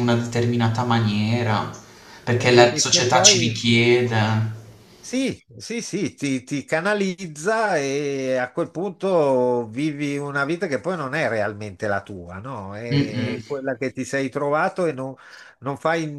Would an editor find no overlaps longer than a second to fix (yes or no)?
no